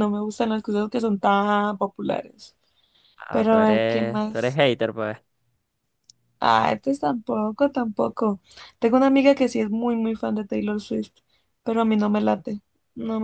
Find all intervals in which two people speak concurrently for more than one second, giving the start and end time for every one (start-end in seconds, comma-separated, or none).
3.3-4.6